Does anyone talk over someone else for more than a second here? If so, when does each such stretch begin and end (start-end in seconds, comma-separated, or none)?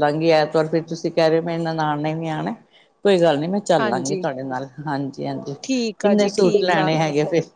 5.6-6.9